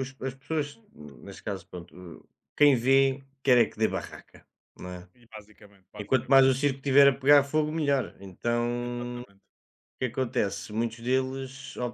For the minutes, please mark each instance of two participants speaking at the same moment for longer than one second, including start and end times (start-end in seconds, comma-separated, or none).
none